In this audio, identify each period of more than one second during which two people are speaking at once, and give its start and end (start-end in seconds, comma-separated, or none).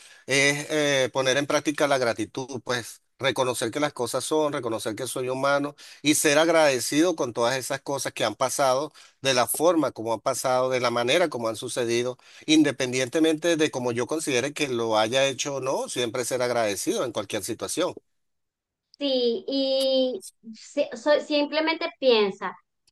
none